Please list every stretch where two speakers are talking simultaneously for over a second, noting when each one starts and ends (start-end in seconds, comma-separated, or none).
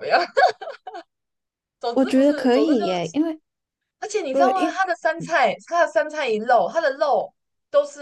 1.9-3.2